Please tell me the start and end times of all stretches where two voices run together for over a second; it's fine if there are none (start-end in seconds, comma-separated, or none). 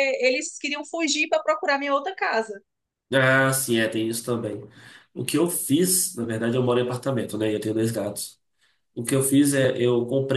none